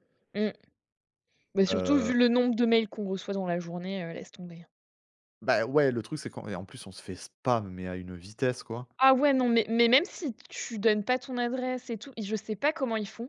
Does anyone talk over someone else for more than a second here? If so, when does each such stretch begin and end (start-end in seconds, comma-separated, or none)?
none